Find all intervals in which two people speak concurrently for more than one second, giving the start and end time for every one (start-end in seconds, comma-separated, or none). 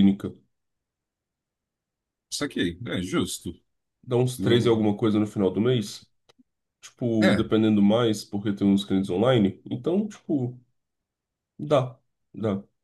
none